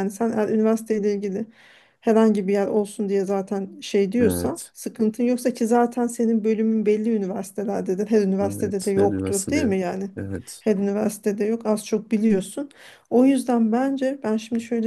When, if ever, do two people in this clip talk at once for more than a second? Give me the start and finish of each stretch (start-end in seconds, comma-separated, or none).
8.4-9.8